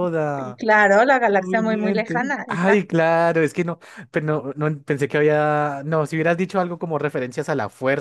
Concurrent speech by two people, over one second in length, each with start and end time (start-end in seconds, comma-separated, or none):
1.4-3.0